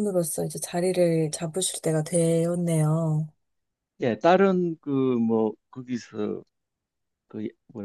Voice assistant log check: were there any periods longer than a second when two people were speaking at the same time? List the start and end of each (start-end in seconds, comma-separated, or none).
none